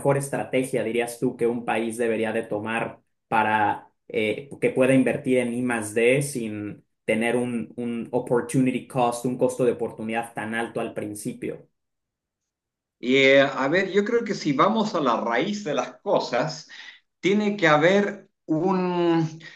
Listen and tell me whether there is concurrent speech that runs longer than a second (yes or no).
no